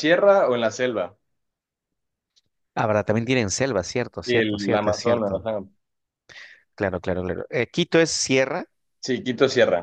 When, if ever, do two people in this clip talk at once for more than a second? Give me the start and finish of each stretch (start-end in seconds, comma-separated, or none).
4.2-5.5